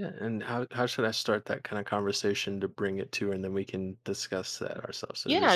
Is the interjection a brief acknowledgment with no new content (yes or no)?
no